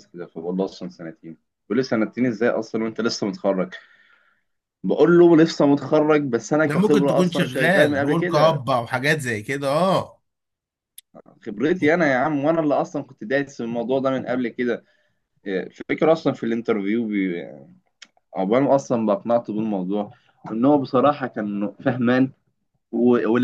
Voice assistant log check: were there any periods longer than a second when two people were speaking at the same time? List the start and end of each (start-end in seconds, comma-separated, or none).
6.7-8.6